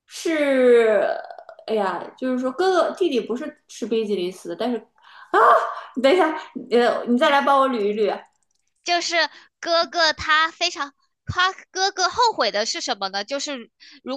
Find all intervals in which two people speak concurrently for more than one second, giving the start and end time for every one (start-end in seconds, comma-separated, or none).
none